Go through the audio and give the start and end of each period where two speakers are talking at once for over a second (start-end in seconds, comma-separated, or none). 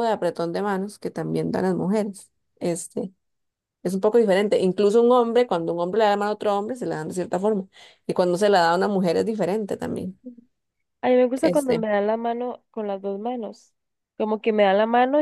none